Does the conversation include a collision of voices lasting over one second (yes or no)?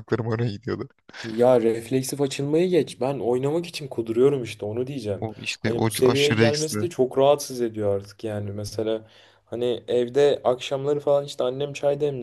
yes